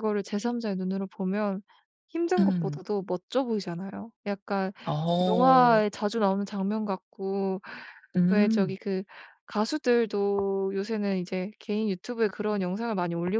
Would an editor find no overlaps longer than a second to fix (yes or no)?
yes